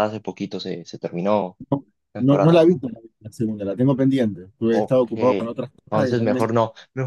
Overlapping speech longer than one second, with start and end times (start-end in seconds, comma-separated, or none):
4.7-6.5